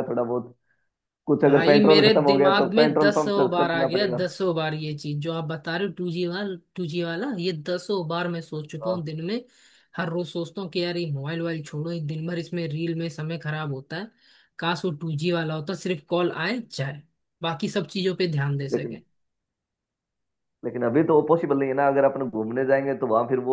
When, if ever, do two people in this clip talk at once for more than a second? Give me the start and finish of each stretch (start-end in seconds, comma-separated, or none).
1.5-4.2